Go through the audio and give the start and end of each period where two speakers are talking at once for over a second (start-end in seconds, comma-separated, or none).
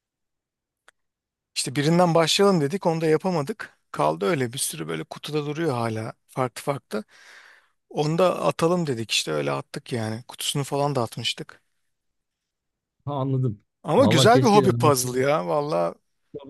13.8-15.2